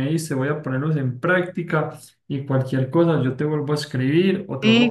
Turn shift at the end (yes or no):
yes